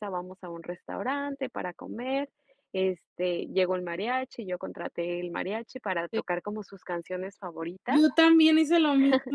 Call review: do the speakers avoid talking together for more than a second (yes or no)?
yes